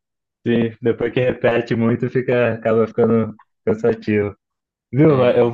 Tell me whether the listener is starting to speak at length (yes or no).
no